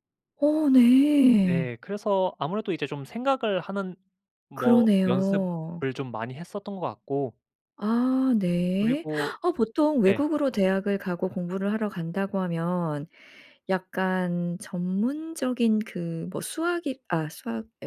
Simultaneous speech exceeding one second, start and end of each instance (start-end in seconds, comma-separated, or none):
4.5-5.8